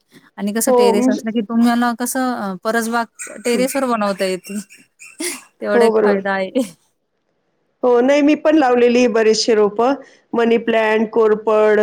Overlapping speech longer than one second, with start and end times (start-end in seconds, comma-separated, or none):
none